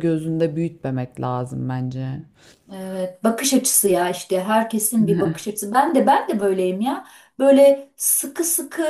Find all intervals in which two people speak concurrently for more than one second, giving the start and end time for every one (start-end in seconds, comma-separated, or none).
none